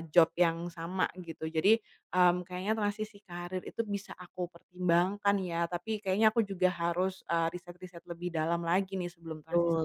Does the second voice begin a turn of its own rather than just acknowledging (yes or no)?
yes